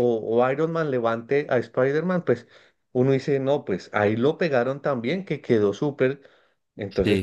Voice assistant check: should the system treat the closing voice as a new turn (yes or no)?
no